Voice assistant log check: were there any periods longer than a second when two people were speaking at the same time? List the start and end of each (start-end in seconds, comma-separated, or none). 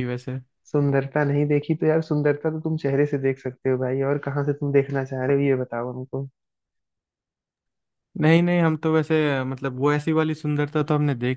none